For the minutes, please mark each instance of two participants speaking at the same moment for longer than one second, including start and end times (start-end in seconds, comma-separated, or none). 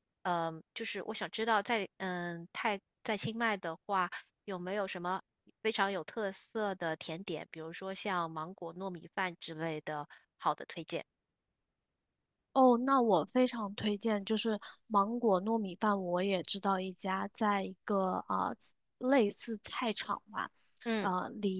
none